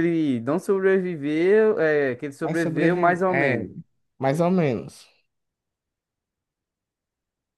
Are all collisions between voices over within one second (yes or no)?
no